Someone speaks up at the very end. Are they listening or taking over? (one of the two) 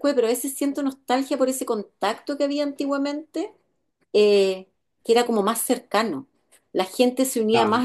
listening